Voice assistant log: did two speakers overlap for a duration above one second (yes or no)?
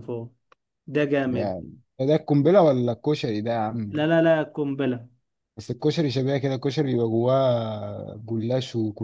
no